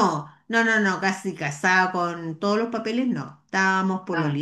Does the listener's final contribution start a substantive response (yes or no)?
no